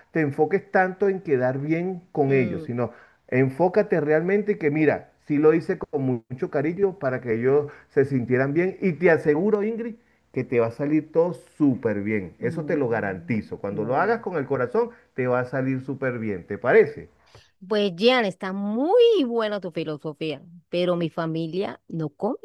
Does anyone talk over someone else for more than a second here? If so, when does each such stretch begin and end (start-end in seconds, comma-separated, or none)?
12.4-14.2